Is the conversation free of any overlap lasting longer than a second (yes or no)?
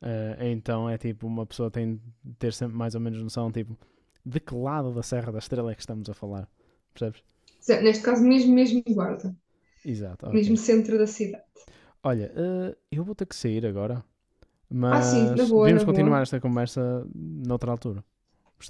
no